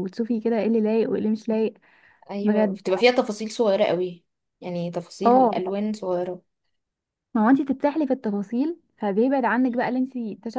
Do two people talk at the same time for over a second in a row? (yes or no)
no